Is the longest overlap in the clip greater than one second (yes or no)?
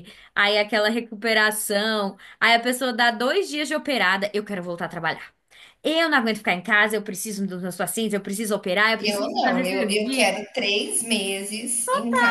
yes